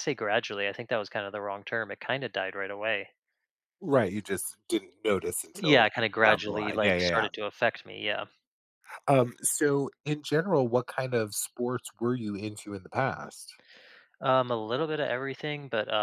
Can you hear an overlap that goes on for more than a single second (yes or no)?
yes